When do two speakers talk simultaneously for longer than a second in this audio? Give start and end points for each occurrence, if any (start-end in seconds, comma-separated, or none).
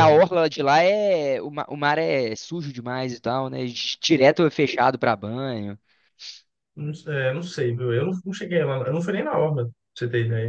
none